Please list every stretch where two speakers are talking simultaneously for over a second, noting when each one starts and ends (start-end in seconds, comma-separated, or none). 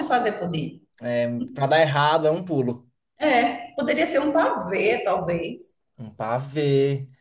none